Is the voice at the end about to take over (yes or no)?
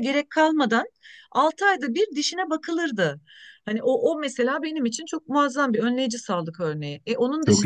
no